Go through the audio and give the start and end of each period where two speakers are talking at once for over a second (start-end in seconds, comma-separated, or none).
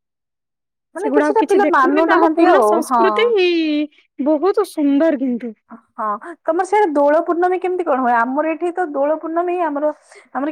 1.0-3.0